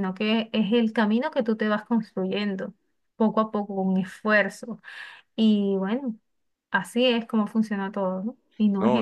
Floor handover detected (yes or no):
yes